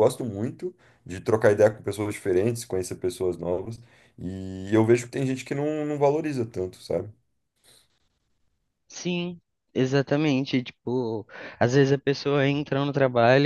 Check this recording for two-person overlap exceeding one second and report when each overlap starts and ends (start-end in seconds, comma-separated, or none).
none